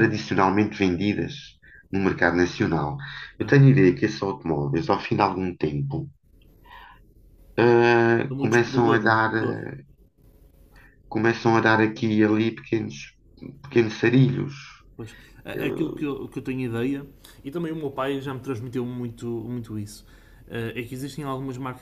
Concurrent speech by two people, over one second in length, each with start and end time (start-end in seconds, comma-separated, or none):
8.3-9.6